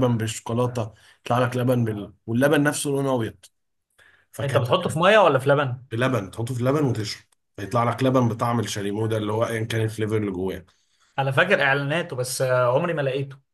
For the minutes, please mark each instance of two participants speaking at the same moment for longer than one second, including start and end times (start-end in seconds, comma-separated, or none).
none